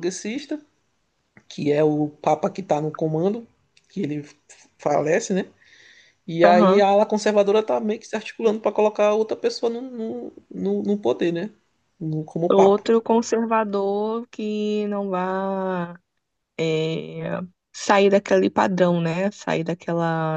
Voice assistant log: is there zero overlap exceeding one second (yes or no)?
yes